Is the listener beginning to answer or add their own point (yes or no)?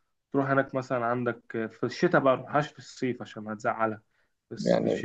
no